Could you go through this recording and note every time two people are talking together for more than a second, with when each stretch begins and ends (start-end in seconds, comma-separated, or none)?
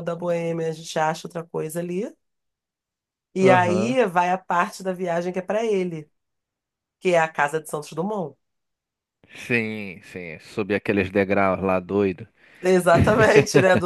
none